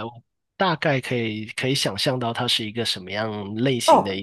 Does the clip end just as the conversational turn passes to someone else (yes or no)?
yes